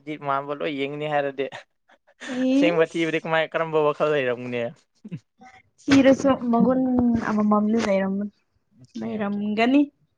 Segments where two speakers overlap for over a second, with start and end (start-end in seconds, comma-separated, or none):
none